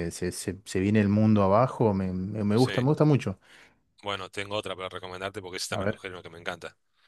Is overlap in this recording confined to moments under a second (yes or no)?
yes